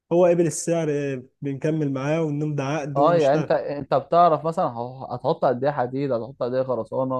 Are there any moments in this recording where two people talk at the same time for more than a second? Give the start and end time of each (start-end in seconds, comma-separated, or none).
none